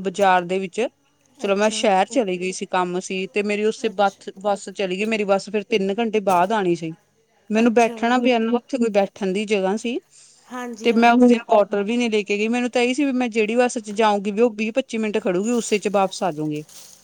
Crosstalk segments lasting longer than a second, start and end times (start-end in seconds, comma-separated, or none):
none